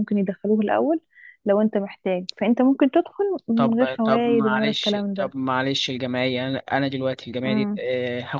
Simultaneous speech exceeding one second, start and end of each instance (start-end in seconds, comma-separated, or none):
3.6-5.3